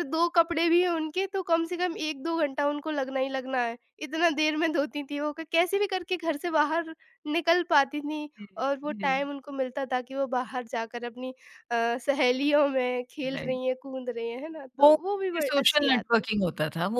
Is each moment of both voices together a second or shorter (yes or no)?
no